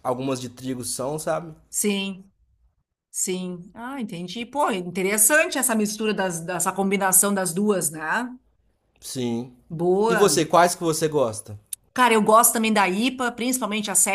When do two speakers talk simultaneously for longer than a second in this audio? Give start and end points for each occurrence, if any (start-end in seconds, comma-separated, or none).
none